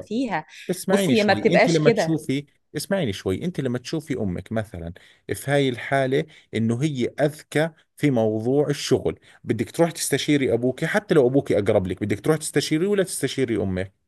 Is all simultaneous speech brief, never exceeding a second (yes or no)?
no